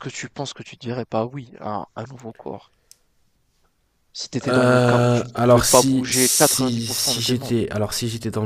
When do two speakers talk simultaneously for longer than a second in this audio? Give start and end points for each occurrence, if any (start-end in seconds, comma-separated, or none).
4.5-7.6